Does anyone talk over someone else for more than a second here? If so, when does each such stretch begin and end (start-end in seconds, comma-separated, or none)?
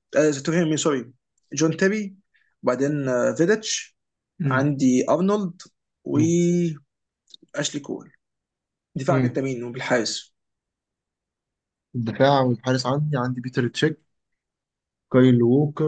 none